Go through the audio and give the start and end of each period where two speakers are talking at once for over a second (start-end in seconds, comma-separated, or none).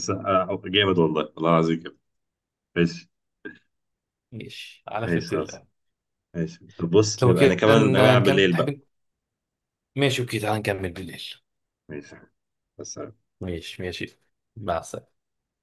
7.2-8.8